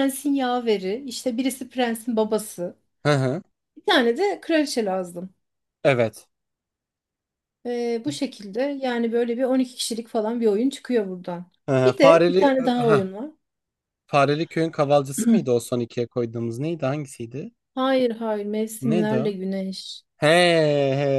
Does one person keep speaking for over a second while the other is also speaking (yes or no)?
yes